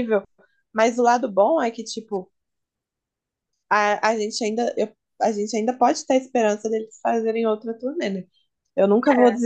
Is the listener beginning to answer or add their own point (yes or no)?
no